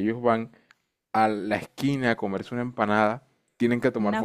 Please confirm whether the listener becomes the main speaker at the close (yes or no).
no